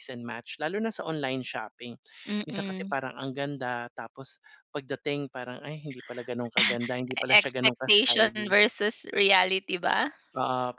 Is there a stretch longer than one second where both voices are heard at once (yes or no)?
yes